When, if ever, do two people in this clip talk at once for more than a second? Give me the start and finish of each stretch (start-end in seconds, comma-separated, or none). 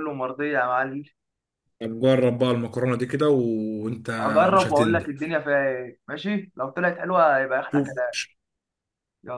none